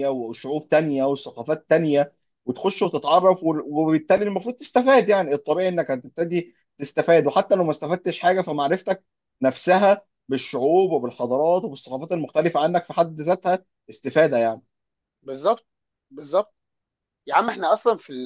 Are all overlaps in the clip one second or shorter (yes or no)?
yes